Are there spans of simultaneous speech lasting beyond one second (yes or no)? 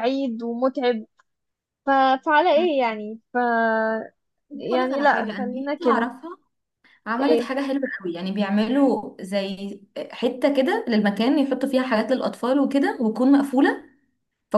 yes